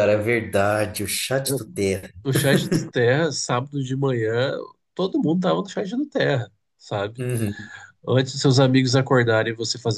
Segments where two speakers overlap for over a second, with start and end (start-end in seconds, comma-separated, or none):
none